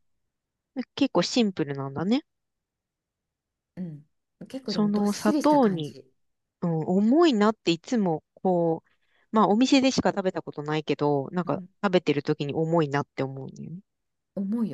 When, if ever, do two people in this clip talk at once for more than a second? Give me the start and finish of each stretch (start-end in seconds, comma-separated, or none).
4.7-6.0